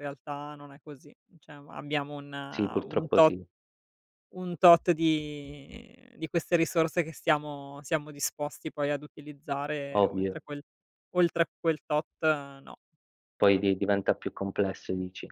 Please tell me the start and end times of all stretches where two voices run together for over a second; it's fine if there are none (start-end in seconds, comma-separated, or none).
none